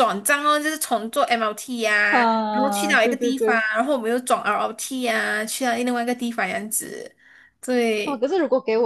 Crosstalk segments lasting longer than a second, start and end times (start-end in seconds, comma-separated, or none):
2.1-3.6